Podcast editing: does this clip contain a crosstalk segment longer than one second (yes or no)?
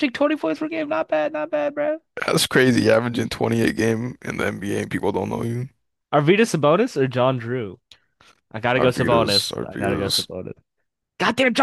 yes